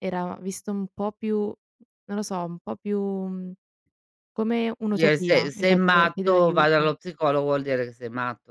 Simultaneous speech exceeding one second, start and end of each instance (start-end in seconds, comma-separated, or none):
5.0-6.9